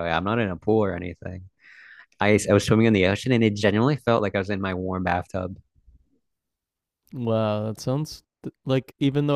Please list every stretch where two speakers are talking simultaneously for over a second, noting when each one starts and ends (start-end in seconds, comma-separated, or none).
none